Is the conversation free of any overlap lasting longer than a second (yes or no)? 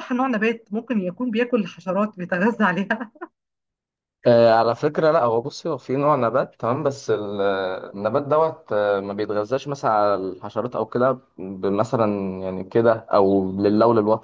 yes